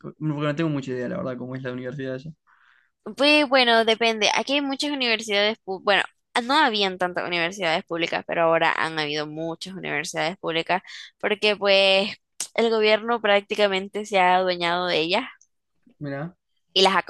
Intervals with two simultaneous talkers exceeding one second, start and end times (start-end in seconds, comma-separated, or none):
none